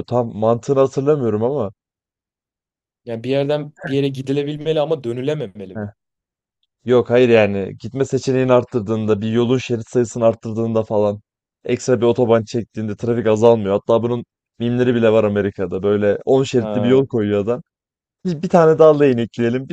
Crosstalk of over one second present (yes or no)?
no